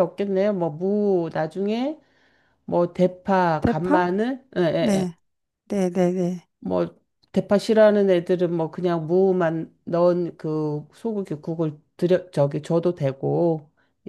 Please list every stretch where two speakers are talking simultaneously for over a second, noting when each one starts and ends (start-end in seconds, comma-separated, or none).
none